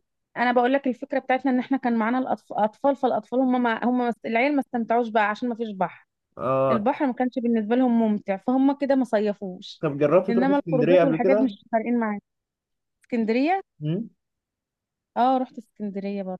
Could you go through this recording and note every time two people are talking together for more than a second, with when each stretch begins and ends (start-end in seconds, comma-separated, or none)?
10.3-11.5